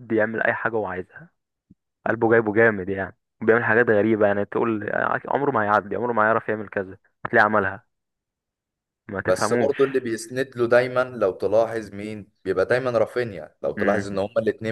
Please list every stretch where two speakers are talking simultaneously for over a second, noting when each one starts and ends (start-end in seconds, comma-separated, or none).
none